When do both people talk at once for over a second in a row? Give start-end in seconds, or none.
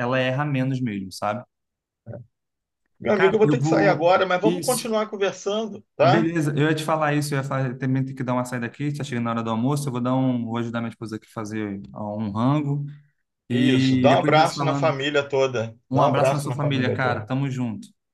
3.1-4.9, 13.5-15.0, 15.9-17.3